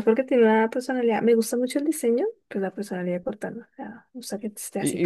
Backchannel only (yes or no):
no